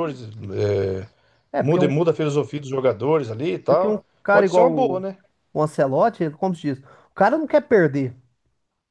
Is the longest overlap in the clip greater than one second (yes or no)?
yes